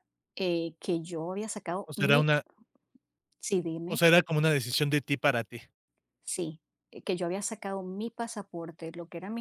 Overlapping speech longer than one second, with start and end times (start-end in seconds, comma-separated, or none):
none